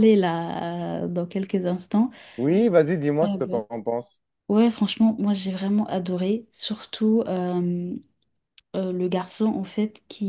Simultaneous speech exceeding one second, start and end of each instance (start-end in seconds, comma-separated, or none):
none